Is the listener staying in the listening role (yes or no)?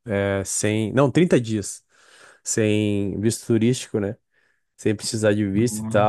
yes